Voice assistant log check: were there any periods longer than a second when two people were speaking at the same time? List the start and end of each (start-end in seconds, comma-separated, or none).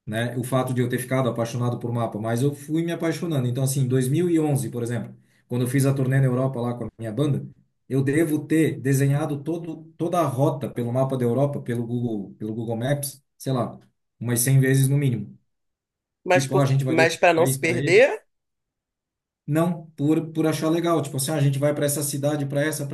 16.3-18.0